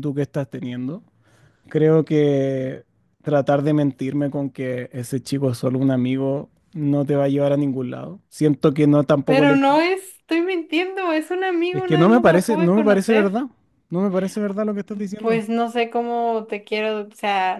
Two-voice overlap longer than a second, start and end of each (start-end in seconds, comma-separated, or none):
11.7-13.4